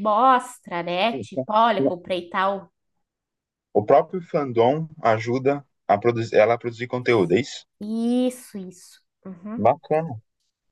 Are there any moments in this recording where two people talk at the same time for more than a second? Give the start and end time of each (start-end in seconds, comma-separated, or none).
none